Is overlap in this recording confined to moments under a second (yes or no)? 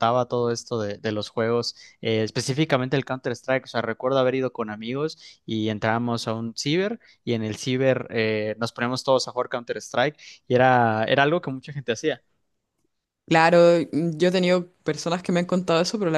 yes